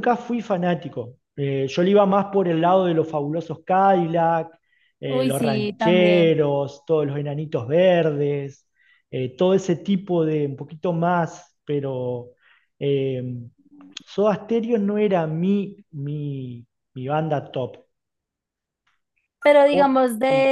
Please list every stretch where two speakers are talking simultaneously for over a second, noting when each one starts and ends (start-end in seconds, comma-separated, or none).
5.0-6.4